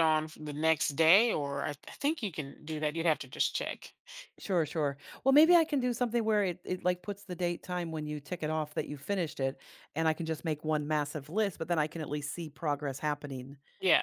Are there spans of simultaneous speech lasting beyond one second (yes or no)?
no